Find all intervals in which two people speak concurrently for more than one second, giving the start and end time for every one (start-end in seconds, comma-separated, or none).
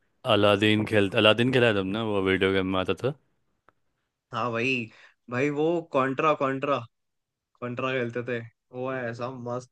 none